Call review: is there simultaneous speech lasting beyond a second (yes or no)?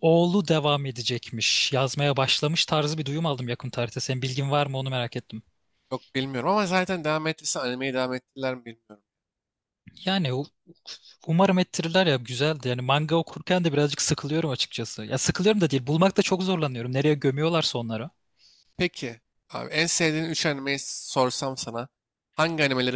no